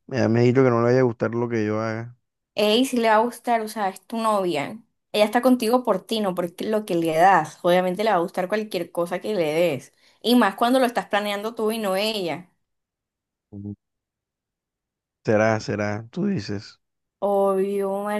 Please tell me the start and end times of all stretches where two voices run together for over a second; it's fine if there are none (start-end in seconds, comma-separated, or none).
none